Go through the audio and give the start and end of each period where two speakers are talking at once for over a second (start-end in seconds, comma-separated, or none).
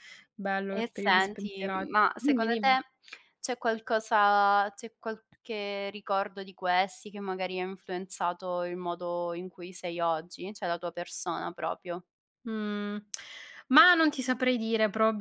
0.7-2.8